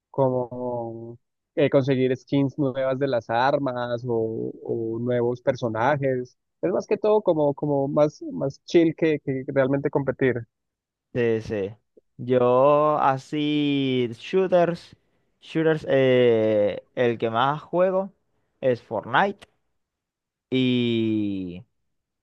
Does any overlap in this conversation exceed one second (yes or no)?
no